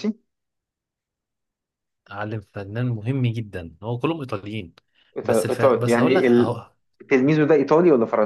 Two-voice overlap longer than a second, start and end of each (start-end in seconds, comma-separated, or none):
5.2-6.6